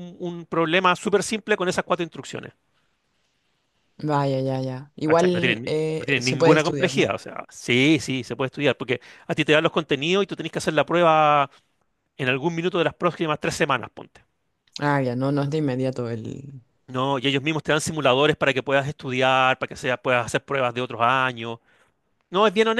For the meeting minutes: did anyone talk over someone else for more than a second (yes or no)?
yes